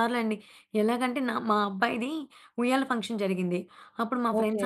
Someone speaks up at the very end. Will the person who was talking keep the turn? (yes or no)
yes